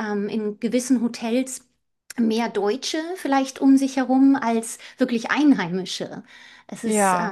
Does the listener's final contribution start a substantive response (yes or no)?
no